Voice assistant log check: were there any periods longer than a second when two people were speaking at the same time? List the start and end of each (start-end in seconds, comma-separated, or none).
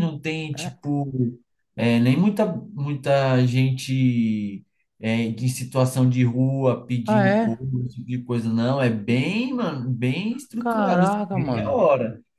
10.6-11.8